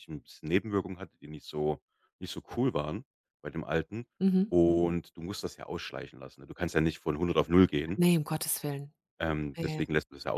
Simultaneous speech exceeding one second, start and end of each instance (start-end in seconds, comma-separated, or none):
none